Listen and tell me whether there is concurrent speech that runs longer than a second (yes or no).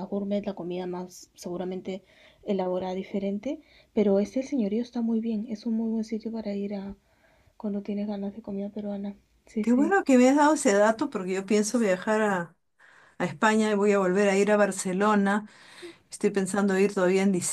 no